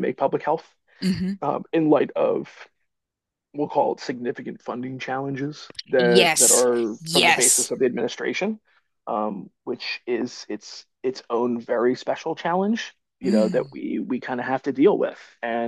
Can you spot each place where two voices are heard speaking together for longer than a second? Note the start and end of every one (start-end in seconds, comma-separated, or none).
6.0-7.7